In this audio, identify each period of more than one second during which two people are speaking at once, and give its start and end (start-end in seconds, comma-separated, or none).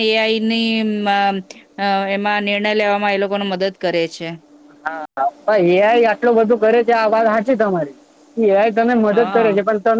none